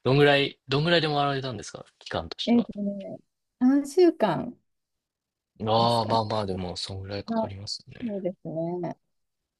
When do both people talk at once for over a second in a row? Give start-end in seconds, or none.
none